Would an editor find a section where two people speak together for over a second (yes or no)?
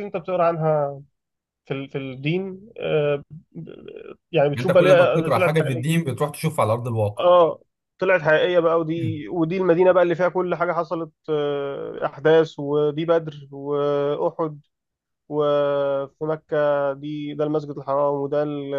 yes